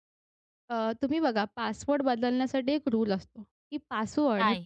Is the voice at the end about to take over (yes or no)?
no